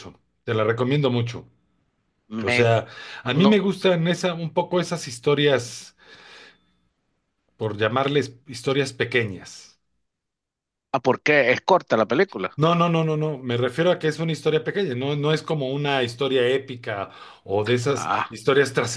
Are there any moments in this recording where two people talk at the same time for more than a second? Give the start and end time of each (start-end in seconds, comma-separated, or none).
none